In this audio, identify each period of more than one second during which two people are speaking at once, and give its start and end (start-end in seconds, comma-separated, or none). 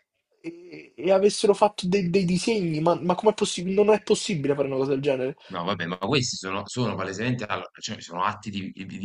none